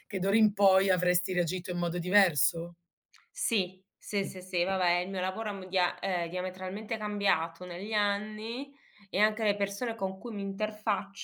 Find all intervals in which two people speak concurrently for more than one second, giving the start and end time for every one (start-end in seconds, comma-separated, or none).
none